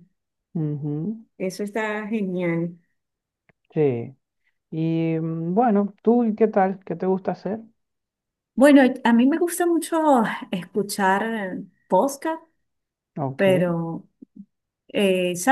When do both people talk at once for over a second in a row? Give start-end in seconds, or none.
none